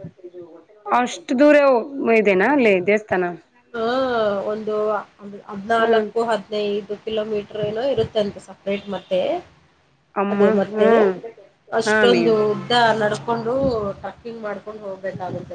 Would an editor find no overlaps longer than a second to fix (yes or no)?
yes